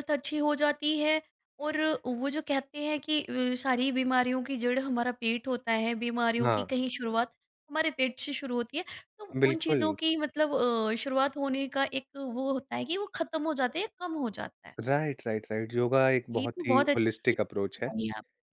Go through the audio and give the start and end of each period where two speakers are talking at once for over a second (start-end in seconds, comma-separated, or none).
16.3-17.9